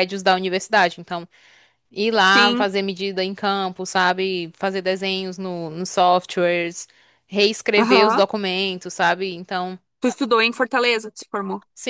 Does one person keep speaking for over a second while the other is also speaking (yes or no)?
no